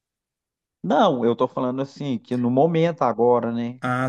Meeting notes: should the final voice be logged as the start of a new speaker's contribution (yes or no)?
yes